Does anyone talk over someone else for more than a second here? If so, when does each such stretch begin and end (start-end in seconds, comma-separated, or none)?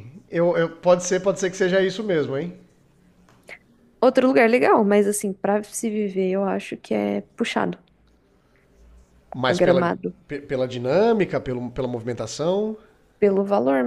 none